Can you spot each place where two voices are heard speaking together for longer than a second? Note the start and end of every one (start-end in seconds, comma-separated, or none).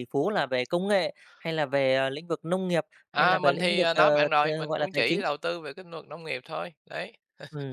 3.1-5.2